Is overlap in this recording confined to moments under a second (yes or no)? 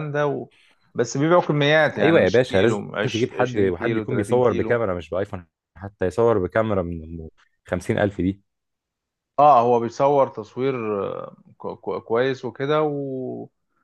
no